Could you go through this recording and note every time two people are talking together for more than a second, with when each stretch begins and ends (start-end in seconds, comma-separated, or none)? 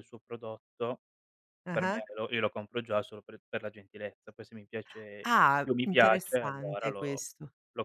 5.2-7.2